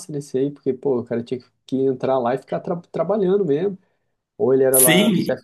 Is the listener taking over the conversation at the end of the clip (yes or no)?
yes